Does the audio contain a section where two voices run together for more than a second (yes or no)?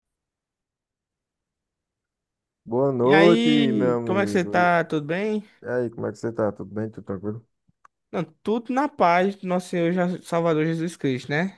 yes